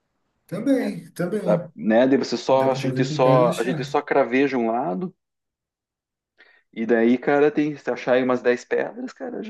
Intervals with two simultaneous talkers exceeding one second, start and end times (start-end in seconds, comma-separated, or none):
2.5-4.0